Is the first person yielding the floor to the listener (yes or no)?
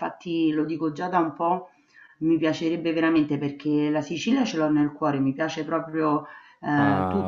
no